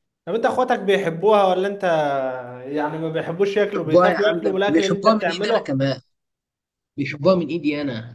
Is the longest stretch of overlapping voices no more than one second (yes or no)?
no